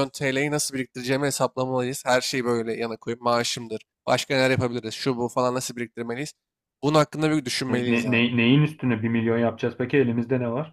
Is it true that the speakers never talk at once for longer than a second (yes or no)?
yes